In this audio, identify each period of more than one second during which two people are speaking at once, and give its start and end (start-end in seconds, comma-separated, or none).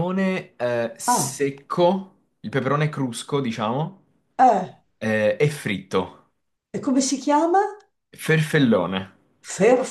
none